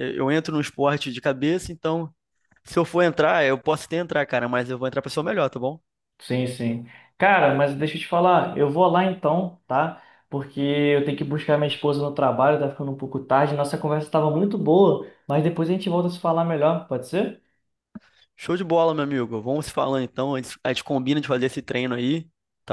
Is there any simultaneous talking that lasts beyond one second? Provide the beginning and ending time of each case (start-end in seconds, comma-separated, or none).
none